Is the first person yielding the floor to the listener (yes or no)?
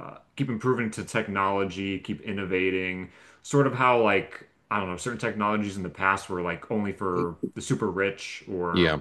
no